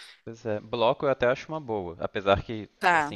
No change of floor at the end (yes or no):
yes